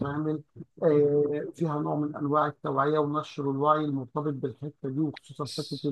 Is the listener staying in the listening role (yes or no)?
no